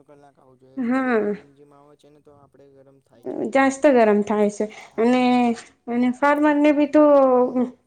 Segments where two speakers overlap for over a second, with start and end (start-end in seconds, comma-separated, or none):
none